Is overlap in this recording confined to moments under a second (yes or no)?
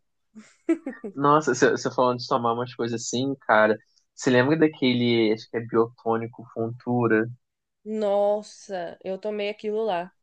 yes